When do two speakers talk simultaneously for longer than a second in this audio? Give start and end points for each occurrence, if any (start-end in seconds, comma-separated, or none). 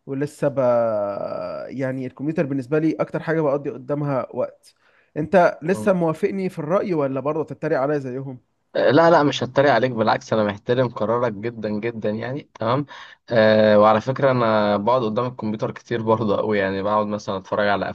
none